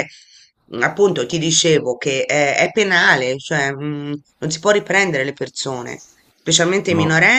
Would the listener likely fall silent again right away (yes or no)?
yes